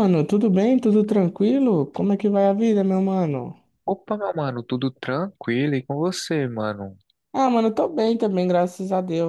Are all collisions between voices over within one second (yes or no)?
yes